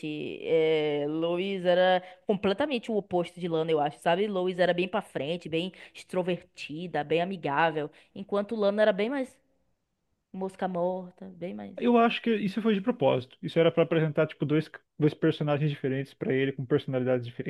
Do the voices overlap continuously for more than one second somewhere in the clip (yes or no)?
no